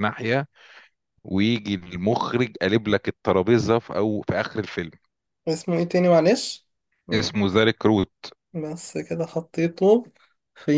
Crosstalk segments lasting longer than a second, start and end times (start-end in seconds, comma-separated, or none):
none